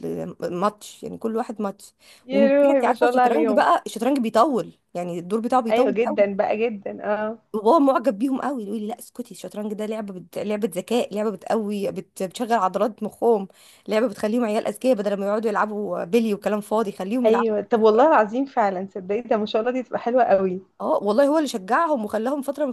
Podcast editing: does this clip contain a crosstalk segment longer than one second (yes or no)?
yes